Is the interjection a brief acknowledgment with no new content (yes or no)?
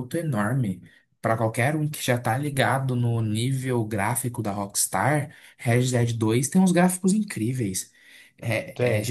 yes